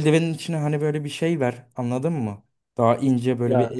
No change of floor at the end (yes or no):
yes